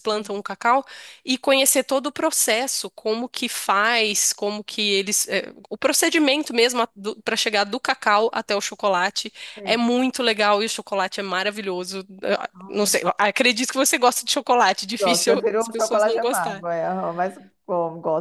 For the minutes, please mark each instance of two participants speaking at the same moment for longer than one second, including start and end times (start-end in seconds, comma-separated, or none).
15.0-16.6